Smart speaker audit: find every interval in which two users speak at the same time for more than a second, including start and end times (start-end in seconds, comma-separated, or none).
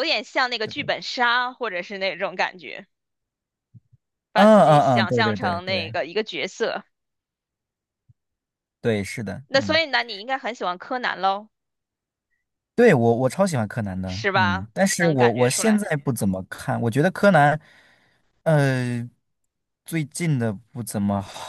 4.3-6.0, 14.0-15.8